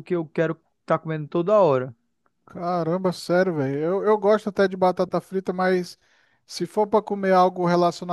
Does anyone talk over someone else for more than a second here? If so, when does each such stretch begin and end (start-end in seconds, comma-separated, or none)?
none